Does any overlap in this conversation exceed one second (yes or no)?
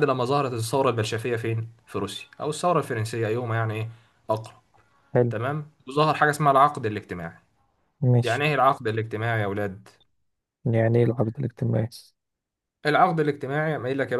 no